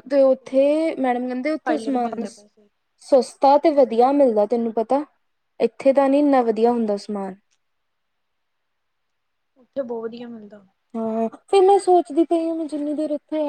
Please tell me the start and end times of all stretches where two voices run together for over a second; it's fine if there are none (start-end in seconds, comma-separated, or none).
1.0-2.2